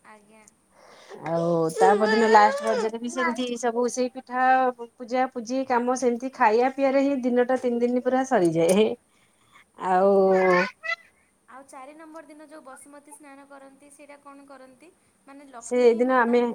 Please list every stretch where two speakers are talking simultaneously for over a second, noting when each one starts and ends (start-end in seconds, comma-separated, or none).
none